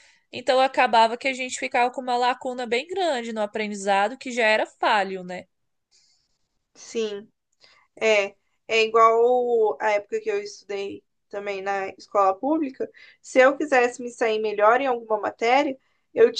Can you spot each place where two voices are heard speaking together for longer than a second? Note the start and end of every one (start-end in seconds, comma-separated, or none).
none